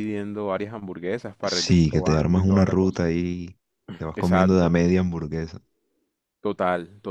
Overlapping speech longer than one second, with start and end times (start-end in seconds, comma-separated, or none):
1.4-3.0